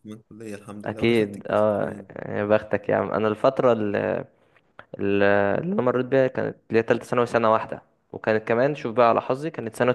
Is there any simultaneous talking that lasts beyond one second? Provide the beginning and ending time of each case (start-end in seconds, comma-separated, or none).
0.8-2.1